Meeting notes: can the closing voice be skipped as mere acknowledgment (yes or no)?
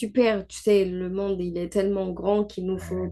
yes